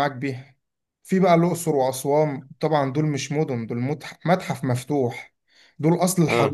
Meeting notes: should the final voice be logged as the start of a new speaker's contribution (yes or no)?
no